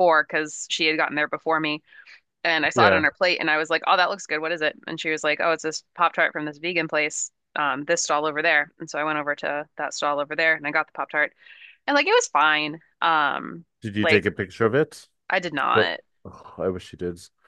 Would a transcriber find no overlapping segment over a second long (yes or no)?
yes